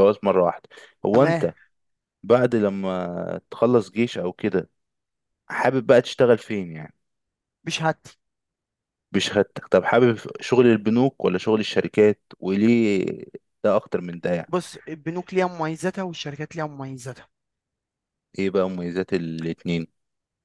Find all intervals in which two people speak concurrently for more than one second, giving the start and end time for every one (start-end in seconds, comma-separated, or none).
none